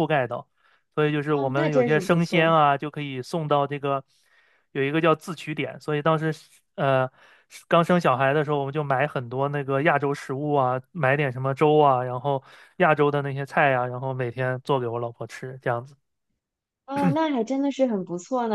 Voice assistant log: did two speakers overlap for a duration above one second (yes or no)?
yes